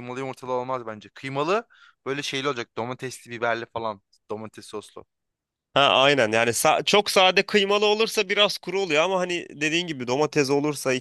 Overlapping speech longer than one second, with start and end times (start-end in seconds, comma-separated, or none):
none